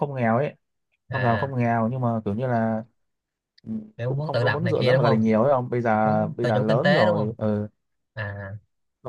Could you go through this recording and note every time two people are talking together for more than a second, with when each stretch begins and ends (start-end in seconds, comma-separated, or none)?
4.0-5.2, 6.0-7.3